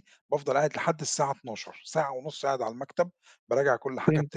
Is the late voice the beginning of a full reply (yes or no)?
yes